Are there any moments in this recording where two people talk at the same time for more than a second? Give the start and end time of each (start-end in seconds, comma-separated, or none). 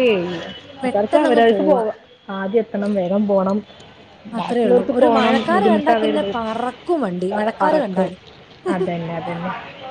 4.4-6.3